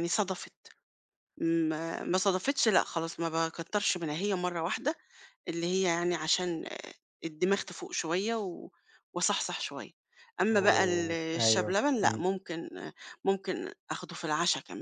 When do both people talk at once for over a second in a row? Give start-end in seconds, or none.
10.5-12.2